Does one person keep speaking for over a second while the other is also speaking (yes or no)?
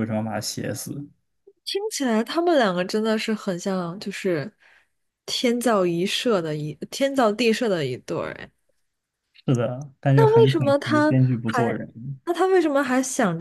yes